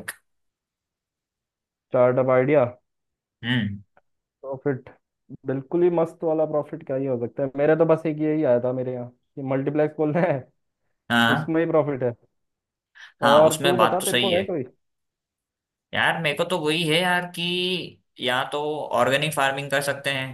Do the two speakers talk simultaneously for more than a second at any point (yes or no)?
yes